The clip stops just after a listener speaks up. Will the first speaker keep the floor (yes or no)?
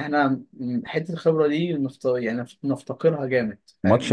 no